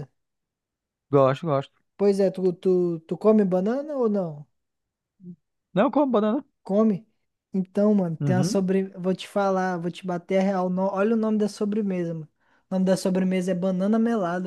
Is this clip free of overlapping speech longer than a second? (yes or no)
yes